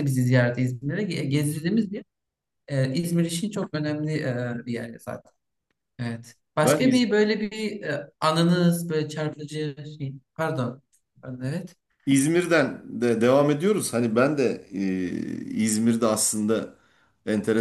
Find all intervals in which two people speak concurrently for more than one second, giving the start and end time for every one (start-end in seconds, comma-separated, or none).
none